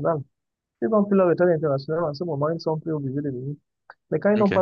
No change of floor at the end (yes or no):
yes